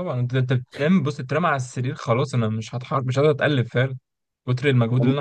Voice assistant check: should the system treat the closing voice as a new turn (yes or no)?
no